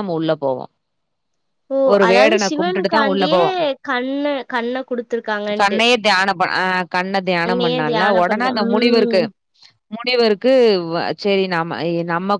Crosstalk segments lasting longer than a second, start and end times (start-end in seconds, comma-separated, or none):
7.5-9.2